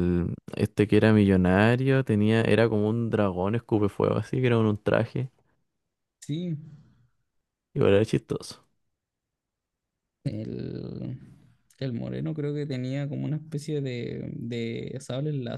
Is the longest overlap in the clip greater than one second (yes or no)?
no